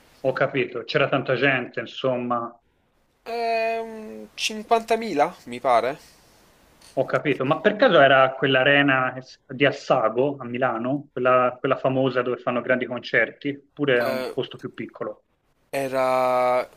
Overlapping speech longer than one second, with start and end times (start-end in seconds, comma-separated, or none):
none